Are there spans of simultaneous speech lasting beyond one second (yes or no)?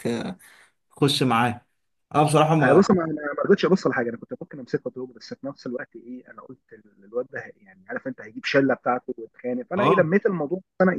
no